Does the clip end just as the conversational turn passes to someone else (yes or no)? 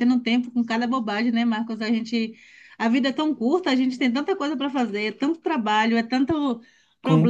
no